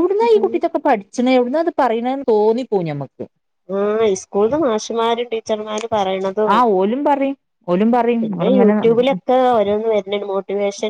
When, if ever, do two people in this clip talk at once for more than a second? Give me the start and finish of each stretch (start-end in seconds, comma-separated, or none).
none